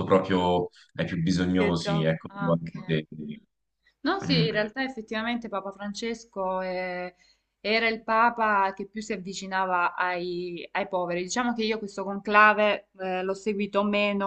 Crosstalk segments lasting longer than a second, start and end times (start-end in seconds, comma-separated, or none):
1.6-3.0